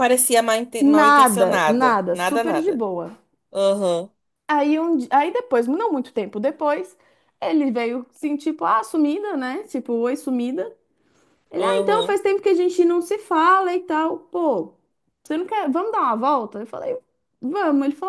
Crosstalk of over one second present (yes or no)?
yes